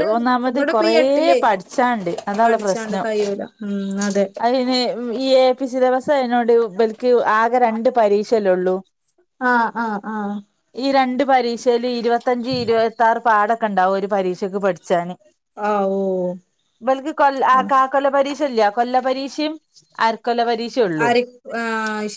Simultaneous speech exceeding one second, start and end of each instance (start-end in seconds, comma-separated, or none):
none